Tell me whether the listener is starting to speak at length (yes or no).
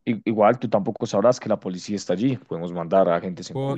yes